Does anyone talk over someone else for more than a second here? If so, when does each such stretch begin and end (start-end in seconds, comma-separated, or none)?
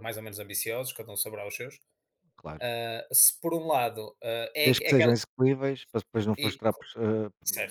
none